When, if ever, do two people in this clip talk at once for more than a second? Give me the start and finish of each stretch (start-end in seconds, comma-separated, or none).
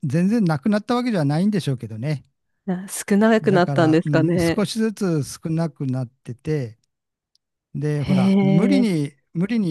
3.4-4.7